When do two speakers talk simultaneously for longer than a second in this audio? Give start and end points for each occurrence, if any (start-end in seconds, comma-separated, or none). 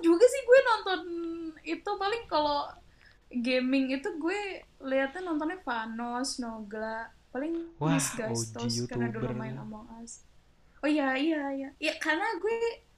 7.8-9.6